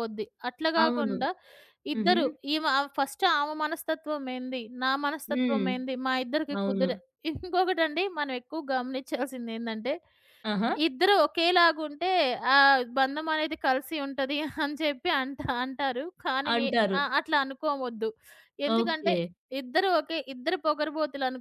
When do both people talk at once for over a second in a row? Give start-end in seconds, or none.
none